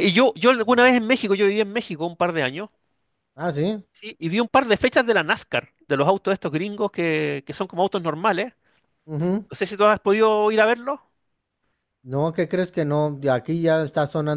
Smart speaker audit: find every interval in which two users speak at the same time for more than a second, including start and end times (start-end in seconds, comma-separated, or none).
none